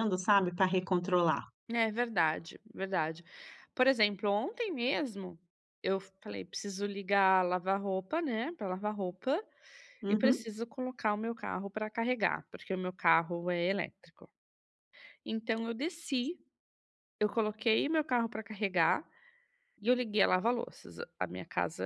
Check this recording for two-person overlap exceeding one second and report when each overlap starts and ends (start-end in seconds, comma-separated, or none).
none